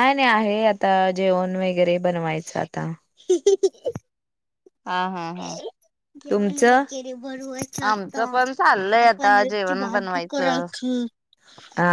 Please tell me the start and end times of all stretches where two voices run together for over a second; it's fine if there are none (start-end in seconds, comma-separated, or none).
7.9-10.7